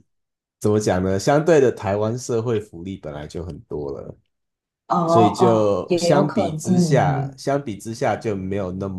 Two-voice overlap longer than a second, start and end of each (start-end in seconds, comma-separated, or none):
5.1-7.4